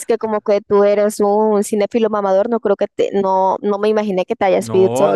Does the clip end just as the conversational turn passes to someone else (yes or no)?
yes